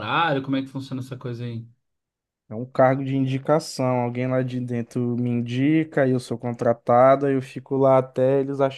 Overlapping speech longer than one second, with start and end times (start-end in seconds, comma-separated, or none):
none